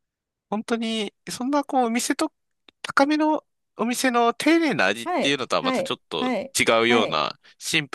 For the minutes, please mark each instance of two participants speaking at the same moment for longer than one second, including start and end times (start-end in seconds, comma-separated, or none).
5.0-7.2